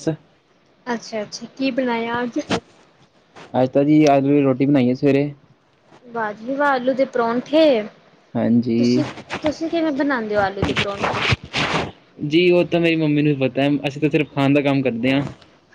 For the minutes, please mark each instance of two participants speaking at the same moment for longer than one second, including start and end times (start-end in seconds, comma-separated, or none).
none